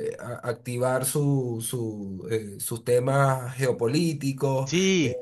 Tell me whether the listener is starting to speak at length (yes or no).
no